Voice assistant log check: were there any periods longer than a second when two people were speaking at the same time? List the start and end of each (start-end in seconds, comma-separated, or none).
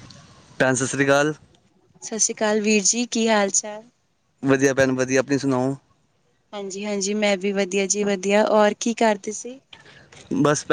none